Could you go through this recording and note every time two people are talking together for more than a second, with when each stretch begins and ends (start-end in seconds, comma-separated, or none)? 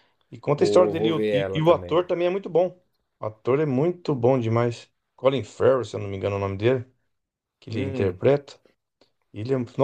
0.5-2.1